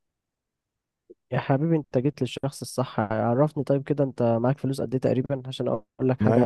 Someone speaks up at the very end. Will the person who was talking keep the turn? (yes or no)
no